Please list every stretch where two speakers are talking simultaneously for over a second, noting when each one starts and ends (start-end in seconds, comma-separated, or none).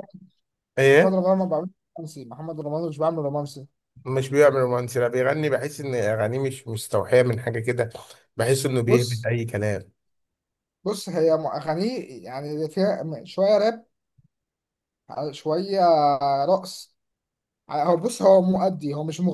none